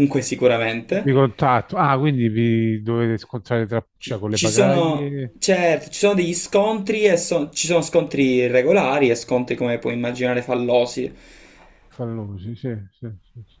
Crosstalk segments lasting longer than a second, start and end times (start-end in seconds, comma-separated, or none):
4.0-5.3